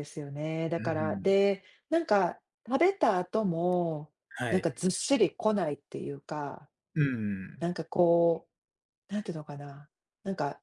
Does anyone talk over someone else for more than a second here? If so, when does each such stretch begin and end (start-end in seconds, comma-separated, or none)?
none